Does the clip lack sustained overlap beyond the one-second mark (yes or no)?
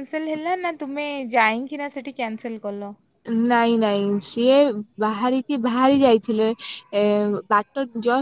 yes